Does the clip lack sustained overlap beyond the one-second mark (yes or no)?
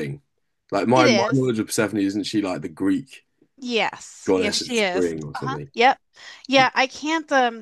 no